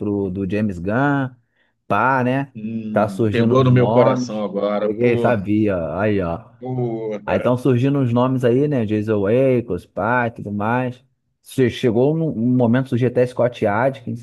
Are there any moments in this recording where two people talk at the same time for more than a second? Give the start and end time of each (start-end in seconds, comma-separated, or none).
2.9-5.5